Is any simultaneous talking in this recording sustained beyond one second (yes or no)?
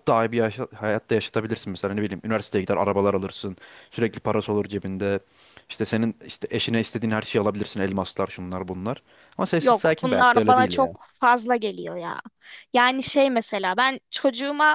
yes